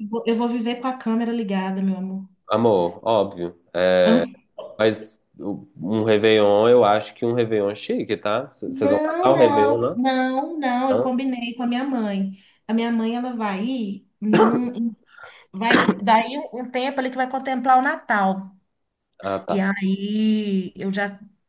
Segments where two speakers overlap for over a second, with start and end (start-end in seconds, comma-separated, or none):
8.7-10.0